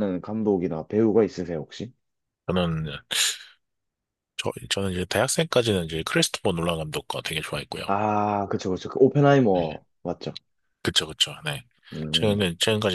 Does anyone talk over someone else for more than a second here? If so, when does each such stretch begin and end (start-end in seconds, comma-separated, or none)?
none